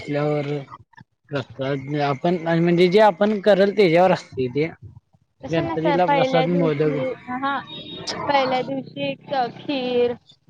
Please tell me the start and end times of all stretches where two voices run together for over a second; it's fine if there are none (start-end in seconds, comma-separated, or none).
5.5-7.0